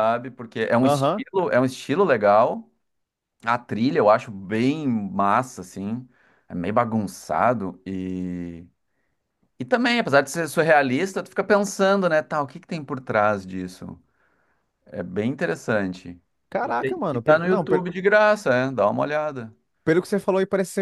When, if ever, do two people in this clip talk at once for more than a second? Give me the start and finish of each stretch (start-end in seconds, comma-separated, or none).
16.6-17.9